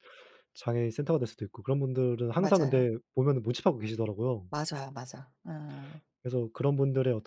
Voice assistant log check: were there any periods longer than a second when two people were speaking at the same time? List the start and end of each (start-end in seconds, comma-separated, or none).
none